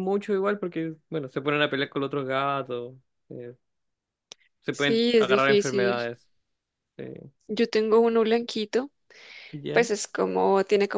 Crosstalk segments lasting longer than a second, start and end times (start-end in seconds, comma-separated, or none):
4.7-6.0